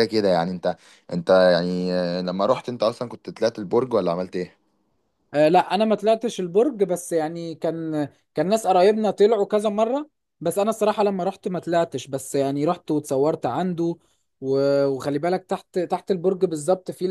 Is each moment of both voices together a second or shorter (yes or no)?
yes